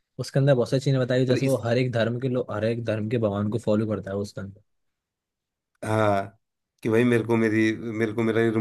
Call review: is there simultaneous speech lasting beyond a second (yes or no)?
no